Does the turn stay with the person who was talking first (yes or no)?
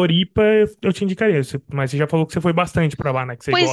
no